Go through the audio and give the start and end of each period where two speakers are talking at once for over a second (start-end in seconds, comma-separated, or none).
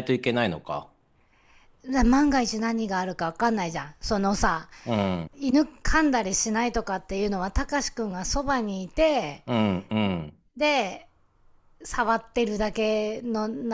none